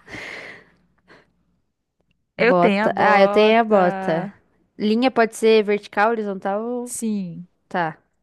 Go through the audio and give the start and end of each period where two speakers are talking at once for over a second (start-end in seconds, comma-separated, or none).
2.4-4.3